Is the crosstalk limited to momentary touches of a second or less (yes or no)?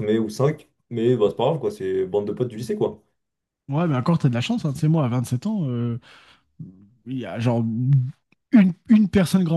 yes